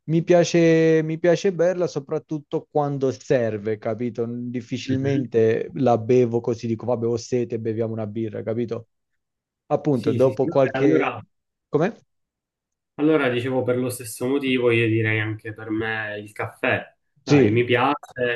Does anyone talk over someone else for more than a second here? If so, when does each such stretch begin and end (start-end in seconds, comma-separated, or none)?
9.9-11.2